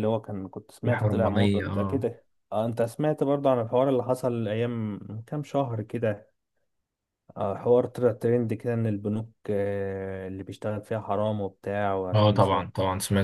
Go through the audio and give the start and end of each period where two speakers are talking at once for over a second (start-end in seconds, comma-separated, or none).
0.8-2.1